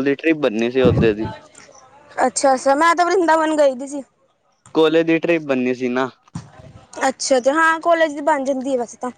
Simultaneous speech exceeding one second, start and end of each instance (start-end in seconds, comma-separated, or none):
none